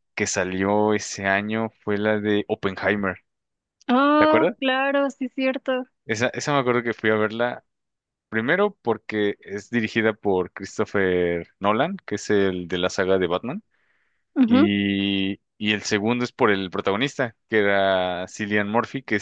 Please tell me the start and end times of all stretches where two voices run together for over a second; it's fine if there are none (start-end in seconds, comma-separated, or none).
none